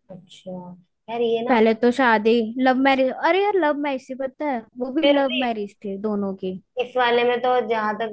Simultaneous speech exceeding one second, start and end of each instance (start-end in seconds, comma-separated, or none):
none